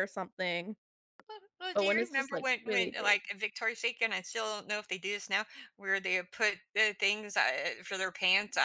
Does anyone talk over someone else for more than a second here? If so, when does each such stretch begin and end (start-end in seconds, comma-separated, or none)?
1.7-3.1